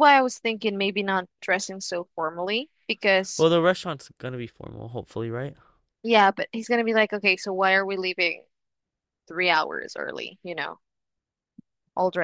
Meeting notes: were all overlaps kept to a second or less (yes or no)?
yes